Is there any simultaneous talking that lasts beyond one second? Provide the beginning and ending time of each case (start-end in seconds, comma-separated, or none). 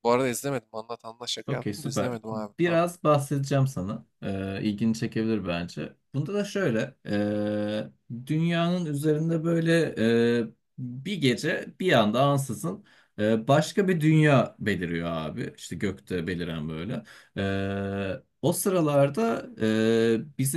1.5-2.8